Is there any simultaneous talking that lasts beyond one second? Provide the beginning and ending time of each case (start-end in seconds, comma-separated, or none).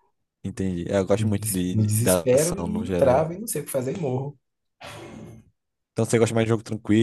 1.2-3.3